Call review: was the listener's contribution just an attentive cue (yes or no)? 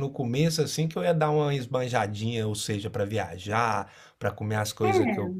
yes